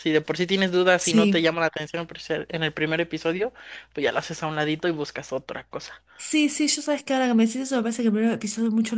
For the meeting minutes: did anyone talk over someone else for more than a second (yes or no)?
no